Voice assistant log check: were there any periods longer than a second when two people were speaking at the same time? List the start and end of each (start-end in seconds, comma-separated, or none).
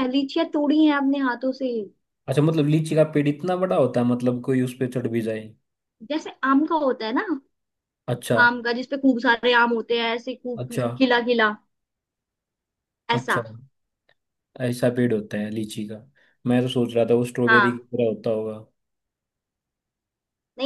none